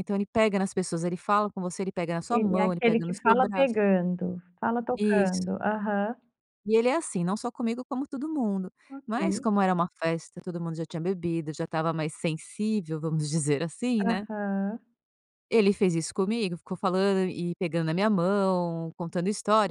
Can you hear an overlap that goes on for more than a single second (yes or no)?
yes